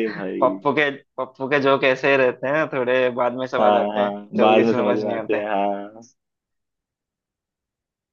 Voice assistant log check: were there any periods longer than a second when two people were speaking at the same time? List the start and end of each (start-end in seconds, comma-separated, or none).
3.6-5.4